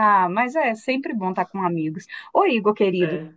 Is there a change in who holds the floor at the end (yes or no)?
no